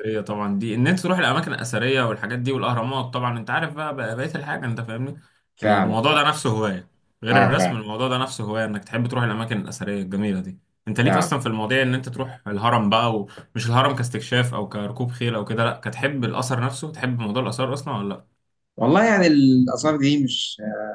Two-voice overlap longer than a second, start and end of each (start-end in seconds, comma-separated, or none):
none